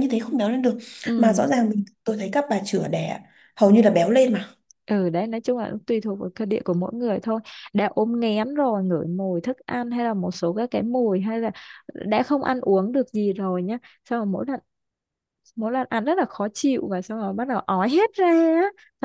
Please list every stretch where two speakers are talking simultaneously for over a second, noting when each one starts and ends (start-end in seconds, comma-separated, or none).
none